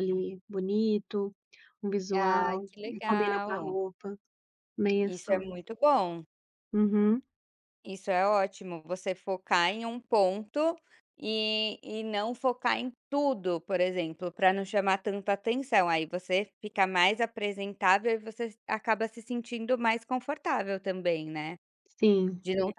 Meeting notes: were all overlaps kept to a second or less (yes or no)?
no